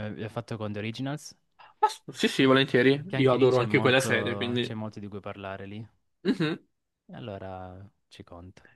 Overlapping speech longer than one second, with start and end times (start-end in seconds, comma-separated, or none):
3.0-4.8